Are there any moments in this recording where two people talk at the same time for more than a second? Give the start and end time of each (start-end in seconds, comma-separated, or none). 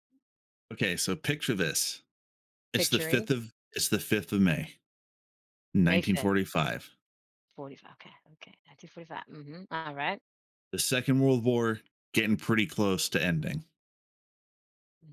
none